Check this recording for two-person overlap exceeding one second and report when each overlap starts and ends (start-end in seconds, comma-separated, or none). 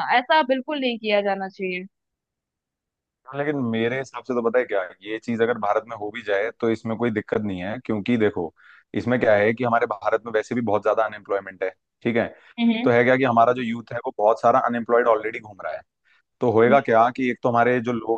none